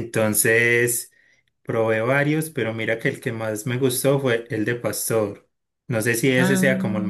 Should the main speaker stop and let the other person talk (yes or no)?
no